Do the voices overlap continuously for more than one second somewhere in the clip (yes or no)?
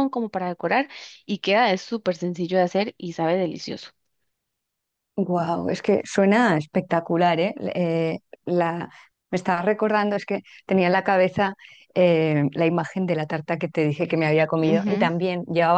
no